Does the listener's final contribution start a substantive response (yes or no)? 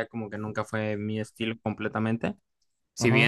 no